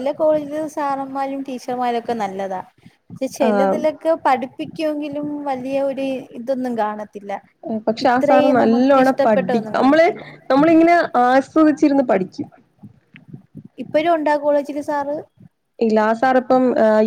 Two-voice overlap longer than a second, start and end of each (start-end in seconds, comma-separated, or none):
8.1-10.1